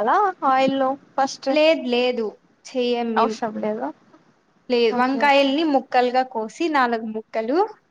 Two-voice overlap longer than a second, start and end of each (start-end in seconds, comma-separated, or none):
none